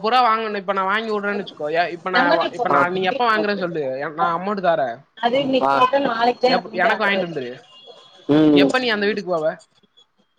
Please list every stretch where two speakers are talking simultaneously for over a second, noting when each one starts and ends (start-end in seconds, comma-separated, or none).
none